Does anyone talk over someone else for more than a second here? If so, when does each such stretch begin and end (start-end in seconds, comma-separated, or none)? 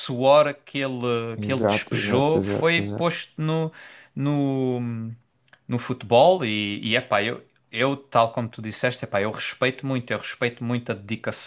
1.4-3.1